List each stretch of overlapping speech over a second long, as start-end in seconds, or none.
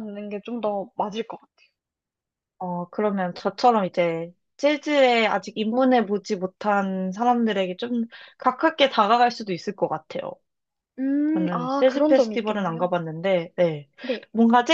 11.3-12.9